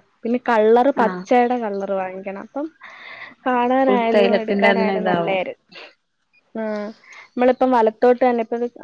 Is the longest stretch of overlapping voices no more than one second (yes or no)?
no